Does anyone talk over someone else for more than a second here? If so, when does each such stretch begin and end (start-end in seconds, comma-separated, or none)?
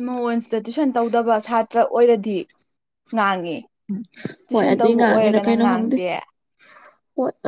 4.5-6.0